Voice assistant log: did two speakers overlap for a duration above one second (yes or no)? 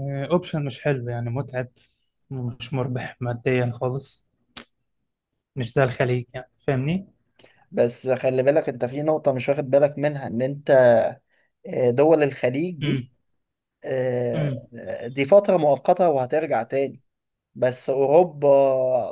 no